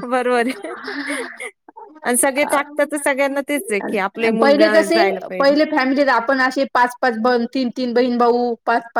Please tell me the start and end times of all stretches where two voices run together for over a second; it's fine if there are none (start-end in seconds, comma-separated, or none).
none